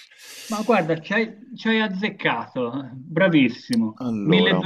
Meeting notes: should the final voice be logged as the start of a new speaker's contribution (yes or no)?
no